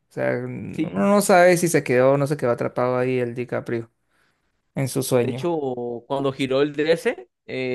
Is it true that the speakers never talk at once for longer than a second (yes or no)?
yes